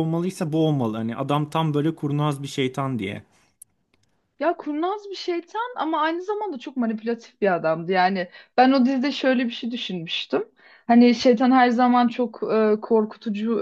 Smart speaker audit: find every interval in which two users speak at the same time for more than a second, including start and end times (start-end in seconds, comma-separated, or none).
none